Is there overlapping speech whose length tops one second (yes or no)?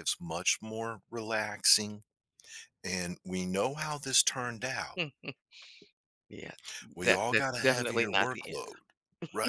yes